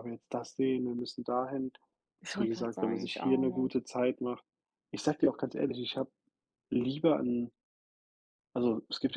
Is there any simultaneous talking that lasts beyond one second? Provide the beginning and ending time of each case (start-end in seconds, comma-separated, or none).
2.4-3.8